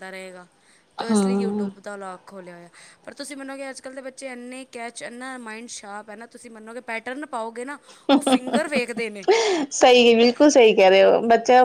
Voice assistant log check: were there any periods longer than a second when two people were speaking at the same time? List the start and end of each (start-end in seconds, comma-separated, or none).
none